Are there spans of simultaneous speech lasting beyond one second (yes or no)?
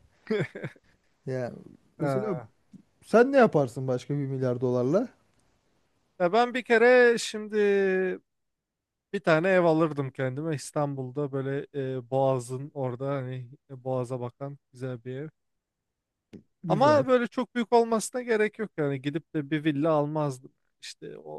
no